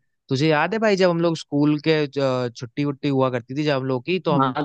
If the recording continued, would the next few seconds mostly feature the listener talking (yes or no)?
yes